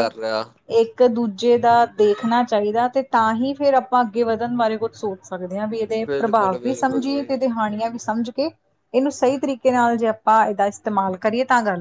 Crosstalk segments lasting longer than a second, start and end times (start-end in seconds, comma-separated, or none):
6.1-7.3